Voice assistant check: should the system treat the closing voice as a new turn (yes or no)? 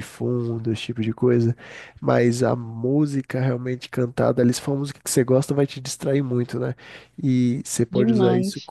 no